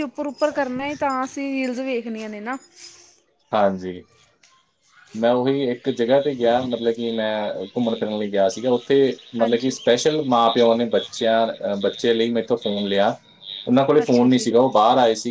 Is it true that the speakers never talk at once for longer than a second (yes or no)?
yes